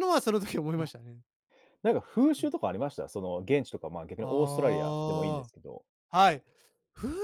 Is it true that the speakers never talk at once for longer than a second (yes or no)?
no